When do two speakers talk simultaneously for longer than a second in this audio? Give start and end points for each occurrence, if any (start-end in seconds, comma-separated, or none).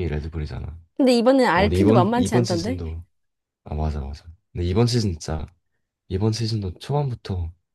1.6-2.8